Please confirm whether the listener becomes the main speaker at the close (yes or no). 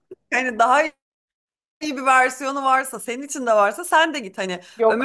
no